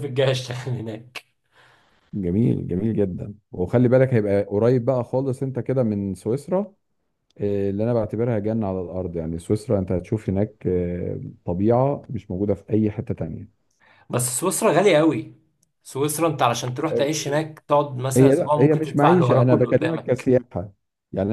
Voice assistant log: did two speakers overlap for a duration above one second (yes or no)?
yes